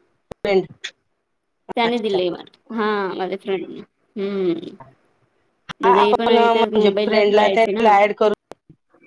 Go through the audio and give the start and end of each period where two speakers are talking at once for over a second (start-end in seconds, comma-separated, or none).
5.8-7.8